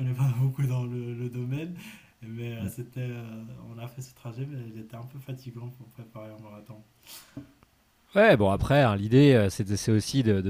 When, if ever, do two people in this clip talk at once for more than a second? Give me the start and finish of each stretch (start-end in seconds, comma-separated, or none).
none